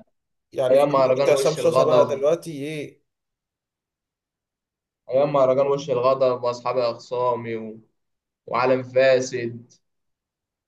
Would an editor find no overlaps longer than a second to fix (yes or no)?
no